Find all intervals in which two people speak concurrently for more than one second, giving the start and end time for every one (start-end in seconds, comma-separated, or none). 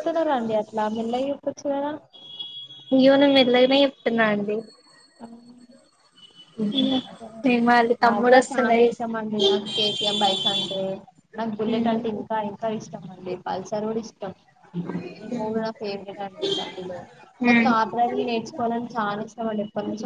none